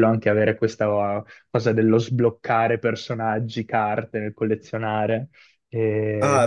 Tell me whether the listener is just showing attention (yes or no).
no